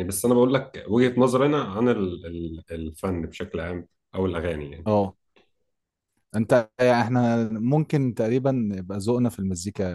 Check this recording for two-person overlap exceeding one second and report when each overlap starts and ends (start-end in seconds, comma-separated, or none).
none